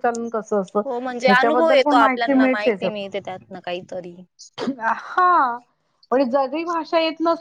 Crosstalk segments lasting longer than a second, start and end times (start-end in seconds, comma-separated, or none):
1.3-2.8